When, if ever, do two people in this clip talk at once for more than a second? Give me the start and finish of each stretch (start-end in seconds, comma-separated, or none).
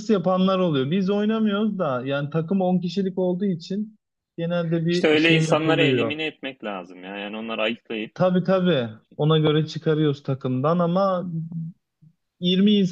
4.9-6.2